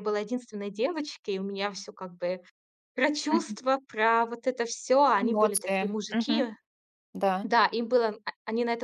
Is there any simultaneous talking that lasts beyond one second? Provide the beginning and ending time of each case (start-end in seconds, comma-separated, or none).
5.2-6.5